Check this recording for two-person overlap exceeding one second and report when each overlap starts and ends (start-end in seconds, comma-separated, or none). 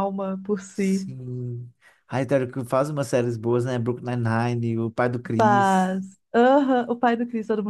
none